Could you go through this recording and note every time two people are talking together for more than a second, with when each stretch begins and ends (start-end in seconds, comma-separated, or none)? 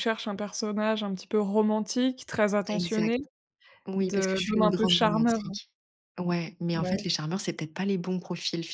4.0-5.4